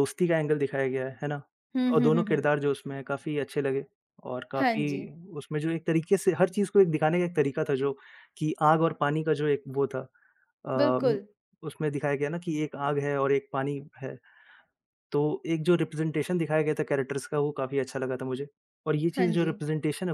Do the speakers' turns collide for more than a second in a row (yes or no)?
no